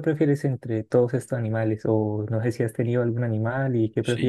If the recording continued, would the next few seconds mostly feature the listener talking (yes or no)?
yes